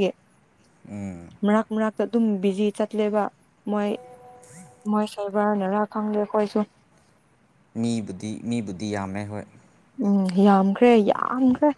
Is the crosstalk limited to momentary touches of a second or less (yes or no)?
yes